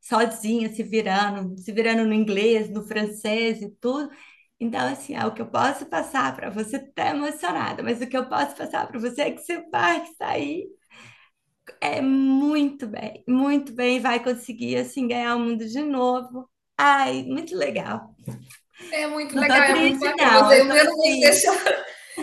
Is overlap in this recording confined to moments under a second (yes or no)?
no